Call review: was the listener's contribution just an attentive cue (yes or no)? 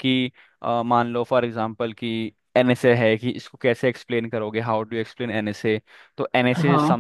yes